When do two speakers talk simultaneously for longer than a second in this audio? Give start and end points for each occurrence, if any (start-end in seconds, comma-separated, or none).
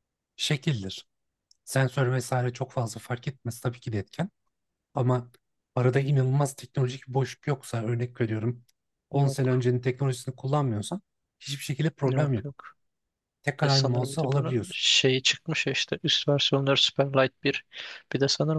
13.6-14.8